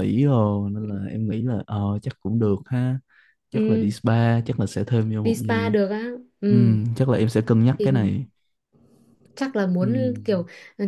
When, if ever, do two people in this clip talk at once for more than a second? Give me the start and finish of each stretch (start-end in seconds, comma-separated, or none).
none